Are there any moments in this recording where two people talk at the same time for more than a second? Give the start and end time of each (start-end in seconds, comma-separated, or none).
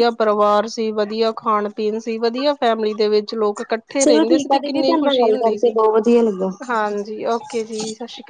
4.0-5.7